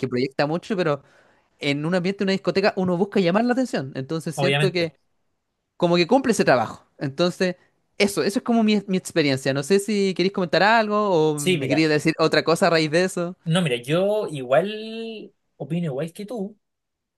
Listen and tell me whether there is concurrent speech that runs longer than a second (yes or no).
no